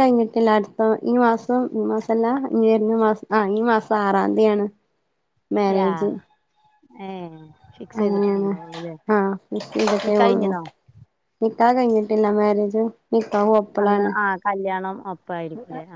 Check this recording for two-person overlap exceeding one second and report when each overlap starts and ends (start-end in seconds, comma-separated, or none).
none